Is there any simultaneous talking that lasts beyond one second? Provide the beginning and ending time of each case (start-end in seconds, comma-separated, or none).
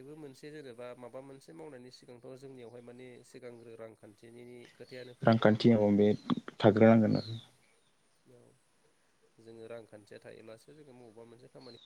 none